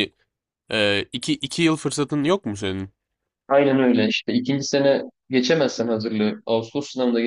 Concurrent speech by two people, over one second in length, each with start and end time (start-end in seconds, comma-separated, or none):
none